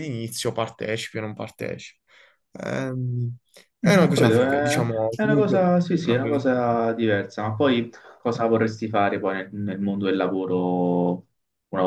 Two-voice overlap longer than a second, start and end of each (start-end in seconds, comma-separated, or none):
3.9-6.8